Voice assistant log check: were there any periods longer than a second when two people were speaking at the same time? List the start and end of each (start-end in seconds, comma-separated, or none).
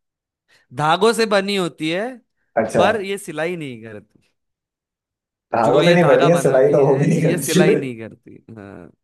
5.6-7.6